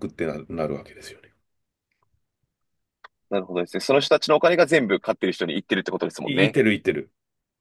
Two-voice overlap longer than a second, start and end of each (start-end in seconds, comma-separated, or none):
none